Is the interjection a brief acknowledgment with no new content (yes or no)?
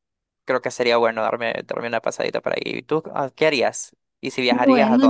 no